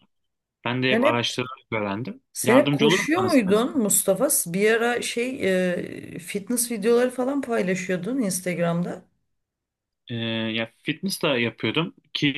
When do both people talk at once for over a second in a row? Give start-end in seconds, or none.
2.3-3.8